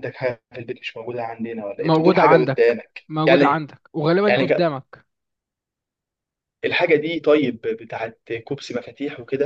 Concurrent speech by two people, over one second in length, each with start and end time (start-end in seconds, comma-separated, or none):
1.8-3.7